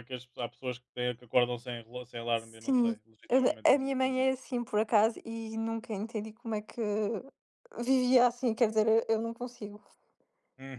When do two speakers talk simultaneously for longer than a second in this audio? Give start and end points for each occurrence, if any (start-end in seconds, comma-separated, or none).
2.4-4.2